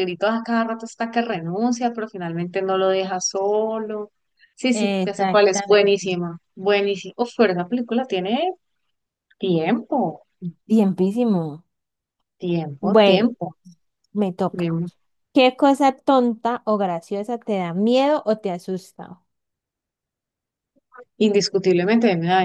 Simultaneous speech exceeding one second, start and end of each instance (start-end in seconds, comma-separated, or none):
4.7-6.1